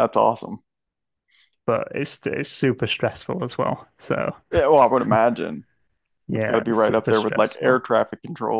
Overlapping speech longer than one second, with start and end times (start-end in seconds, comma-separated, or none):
6.3-7.8